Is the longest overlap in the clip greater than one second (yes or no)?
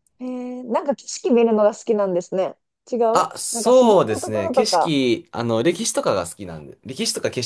yes